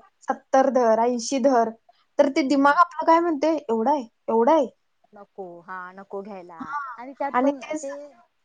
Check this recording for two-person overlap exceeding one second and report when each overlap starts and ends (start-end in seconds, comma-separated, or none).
none